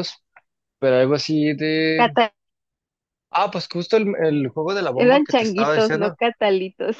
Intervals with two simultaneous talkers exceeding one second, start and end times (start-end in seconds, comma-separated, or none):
4.9-6.2